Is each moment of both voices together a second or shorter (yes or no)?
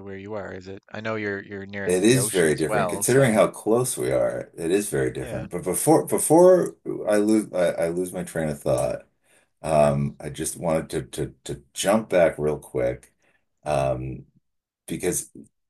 no